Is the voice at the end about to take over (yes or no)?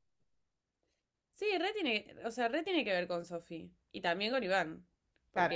no